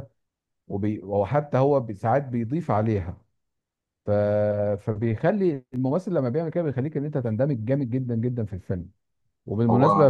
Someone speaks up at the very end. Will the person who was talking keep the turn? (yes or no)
yes